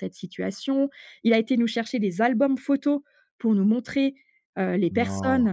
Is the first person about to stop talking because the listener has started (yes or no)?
no